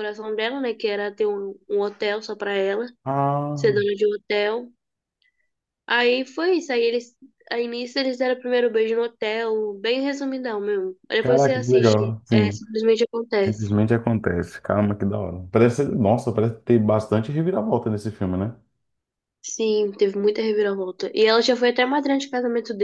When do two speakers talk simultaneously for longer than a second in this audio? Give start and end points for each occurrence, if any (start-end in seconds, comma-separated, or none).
11.2-12.6